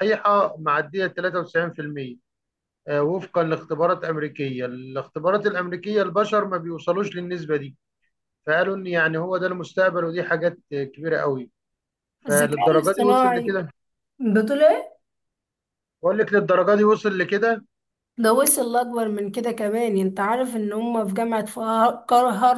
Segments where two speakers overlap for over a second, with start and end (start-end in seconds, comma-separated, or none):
12.3-13.6